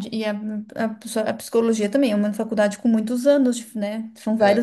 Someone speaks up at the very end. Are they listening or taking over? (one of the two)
listening